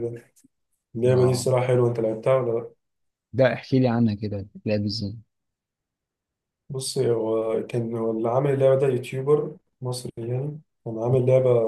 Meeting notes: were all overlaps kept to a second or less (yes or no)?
yes